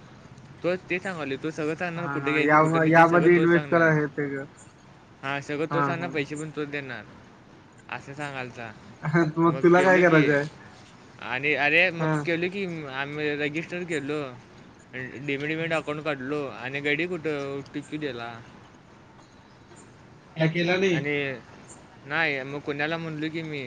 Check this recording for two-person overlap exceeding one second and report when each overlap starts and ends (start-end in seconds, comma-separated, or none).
2.0-3.9